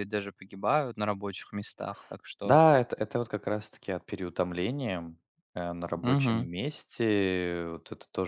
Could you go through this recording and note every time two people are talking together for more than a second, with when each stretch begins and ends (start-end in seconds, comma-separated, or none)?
none